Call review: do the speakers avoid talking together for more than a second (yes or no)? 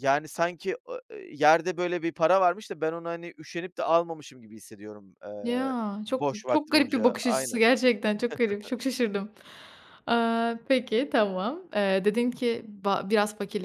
no